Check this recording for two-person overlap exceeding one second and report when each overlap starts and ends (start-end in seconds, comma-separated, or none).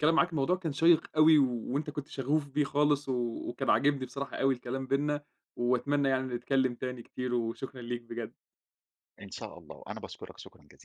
none